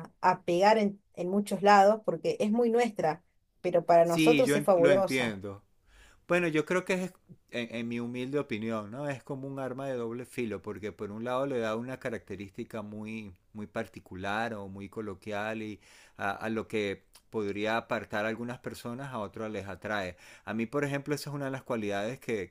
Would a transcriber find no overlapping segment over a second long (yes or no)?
no